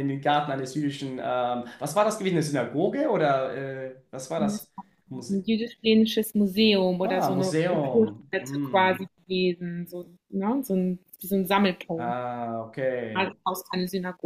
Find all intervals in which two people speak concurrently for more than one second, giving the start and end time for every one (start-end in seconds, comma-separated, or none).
7.0-9.0